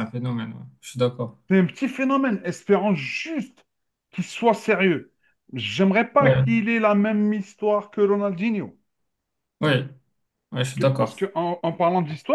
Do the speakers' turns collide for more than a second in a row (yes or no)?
no